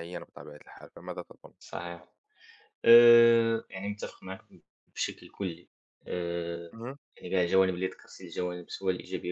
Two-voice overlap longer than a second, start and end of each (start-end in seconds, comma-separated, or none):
none